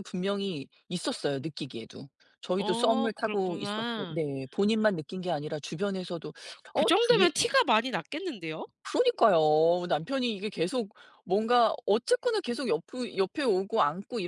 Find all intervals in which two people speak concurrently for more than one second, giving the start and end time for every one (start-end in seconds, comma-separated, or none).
2.6-4.2